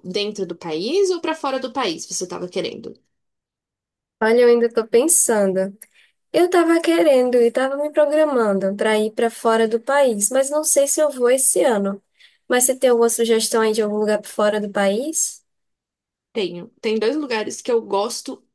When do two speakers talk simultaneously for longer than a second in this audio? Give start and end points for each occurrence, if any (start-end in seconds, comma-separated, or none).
none